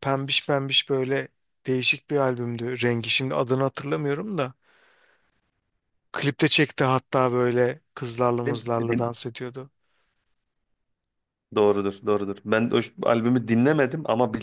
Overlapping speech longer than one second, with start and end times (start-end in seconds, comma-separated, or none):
none